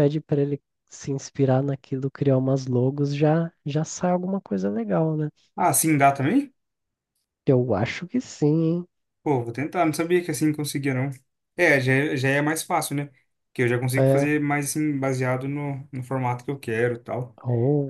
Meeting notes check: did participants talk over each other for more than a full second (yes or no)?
no